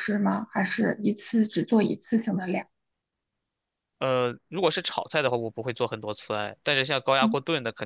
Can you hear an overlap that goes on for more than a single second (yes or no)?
no